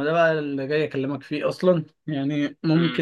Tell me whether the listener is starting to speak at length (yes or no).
no